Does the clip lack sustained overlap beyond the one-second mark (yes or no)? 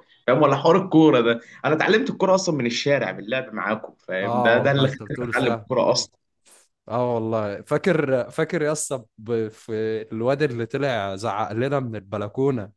no